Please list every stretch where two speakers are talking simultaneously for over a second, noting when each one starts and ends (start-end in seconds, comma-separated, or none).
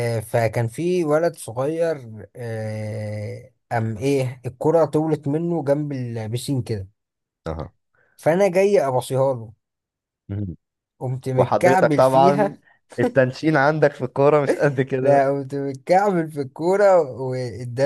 11.4-12.6